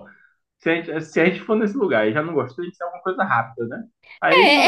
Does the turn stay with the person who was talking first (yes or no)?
no